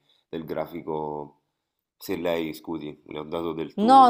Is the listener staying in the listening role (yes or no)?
no